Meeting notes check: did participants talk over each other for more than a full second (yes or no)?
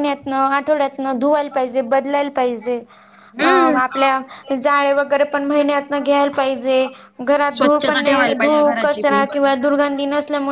yes